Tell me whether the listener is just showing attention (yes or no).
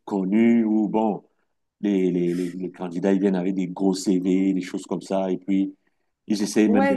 no